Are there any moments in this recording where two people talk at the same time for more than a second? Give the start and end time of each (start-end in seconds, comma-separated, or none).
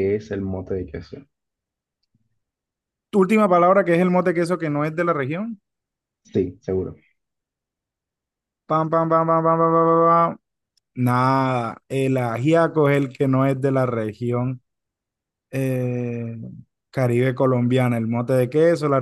none